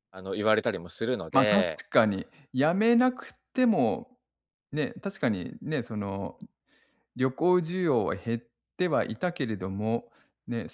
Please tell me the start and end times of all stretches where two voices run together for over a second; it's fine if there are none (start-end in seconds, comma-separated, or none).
none